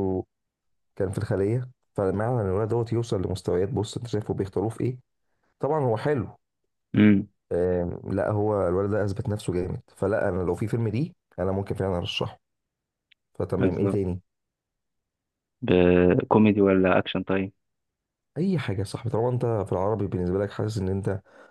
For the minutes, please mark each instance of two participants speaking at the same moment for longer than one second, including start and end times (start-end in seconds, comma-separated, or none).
none